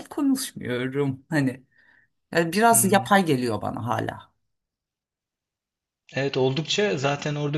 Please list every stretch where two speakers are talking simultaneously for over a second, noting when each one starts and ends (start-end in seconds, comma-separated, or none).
none